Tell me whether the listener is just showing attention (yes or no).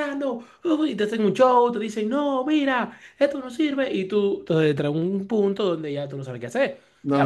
no